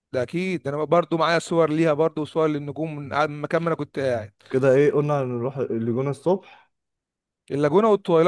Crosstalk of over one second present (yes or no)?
no